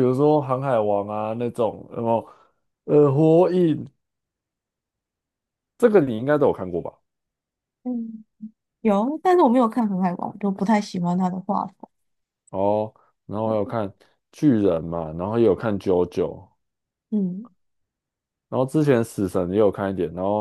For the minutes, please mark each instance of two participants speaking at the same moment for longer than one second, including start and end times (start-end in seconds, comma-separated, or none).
none